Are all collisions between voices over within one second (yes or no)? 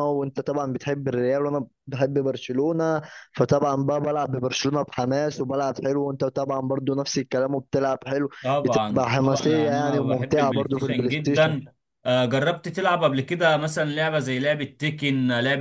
no